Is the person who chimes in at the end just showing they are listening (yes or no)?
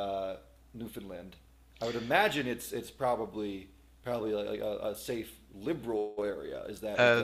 no